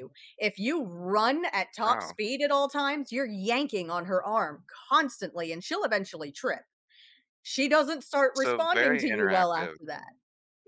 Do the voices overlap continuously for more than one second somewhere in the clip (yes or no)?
yes